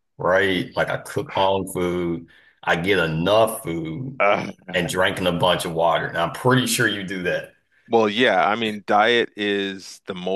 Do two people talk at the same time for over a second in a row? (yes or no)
no